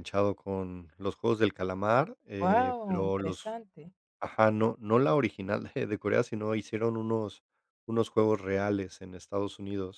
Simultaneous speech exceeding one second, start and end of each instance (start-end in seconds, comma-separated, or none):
2.4-3.6